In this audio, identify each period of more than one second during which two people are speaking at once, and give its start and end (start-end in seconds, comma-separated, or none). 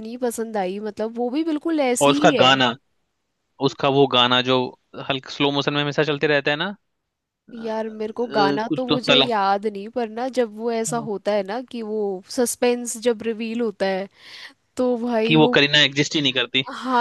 7.6-9.2